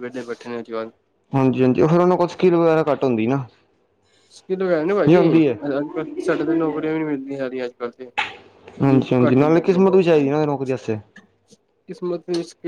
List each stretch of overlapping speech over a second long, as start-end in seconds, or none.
8.9-10.3